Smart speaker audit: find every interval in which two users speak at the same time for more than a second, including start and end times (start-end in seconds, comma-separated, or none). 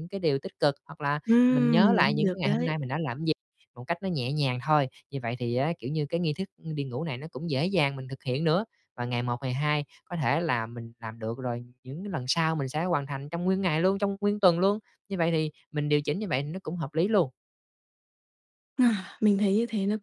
1.3-2.7